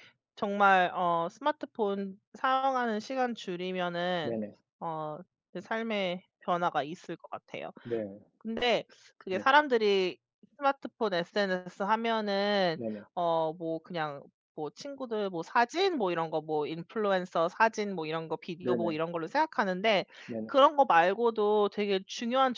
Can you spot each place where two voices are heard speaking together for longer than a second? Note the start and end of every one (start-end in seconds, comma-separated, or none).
none